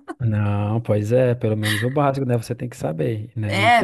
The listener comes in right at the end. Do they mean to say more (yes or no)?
yes